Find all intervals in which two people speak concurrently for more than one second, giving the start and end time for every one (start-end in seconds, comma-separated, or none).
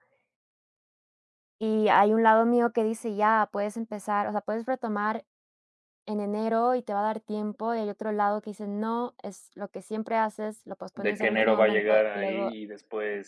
10.9-12.5